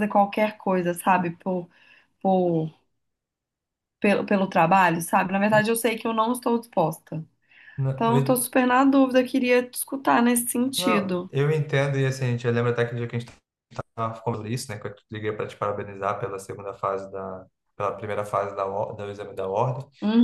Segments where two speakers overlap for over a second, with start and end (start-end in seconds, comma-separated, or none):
none